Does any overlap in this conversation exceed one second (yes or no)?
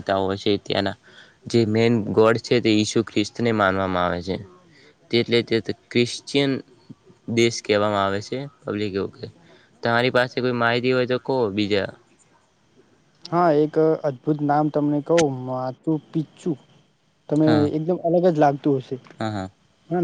no